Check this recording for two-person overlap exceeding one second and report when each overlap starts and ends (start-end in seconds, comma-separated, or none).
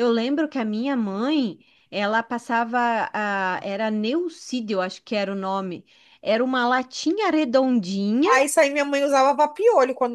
none